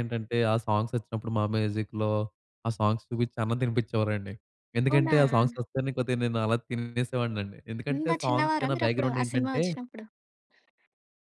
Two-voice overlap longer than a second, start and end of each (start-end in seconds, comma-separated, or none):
8.0-9.6